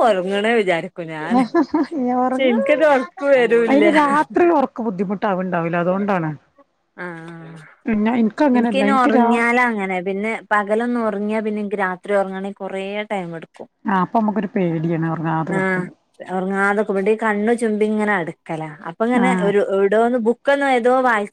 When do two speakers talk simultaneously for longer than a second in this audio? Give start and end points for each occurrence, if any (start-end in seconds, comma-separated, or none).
none